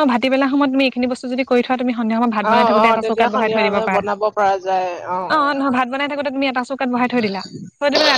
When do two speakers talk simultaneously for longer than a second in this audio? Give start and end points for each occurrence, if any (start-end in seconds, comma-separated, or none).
2.5-4.9